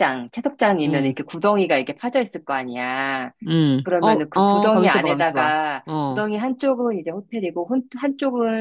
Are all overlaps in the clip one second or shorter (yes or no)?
no